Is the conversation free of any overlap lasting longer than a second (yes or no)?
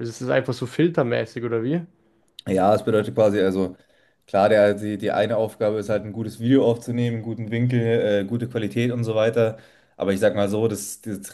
yes